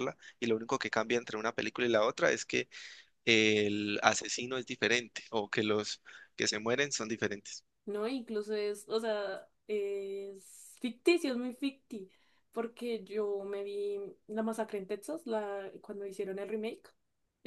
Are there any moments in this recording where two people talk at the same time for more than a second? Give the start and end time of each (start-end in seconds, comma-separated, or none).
none